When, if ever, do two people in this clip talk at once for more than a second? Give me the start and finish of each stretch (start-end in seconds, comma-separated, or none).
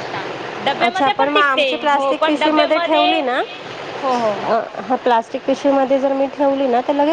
0.9-3.1